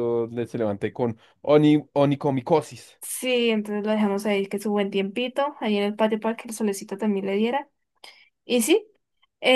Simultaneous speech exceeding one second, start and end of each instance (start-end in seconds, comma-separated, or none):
none